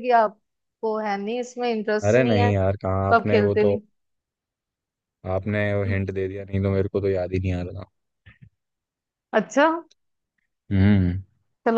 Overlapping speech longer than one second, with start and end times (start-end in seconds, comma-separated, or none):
2.1-3.8